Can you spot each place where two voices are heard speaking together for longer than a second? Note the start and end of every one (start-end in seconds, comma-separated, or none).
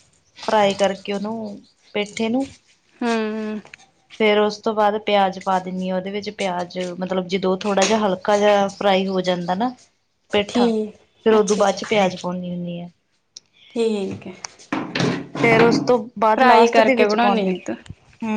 none